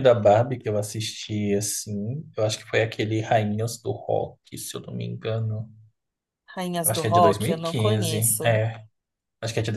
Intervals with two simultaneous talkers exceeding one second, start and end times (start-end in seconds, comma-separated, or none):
6.8-8.6